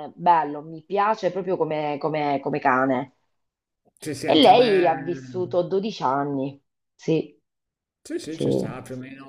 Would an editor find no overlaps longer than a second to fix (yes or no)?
no